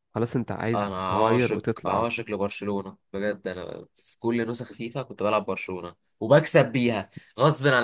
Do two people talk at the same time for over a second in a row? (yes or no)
yes